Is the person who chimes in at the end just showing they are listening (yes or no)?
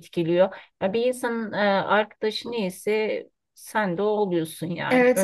no